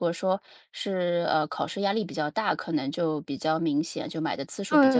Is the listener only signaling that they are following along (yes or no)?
no